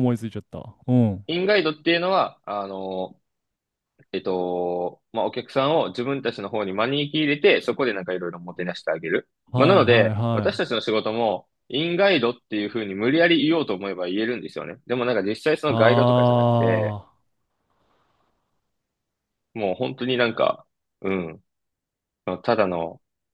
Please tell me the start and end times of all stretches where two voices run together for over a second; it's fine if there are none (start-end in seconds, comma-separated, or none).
9.5-10.8